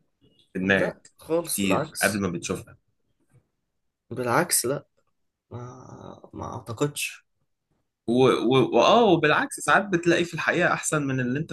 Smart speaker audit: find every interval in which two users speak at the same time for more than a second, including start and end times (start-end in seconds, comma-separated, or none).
0.6-2.2